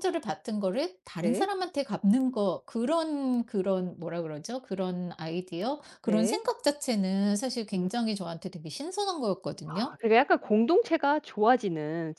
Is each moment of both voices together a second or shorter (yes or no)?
yes